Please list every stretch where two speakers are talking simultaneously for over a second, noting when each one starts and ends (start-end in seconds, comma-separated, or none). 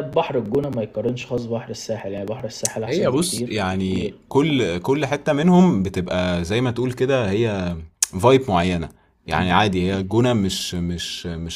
2.9-4.1